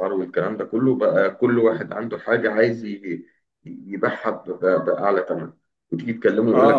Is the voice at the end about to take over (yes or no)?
yes